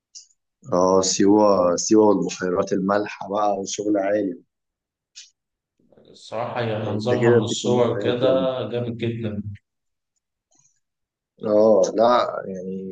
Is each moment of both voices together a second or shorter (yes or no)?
no